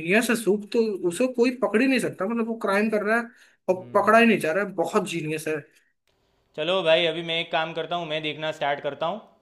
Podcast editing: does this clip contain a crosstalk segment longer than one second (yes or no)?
no